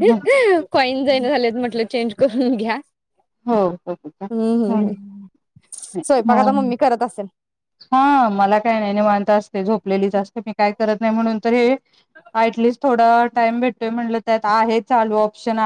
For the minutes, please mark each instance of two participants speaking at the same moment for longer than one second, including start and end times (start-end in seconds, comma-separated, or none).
none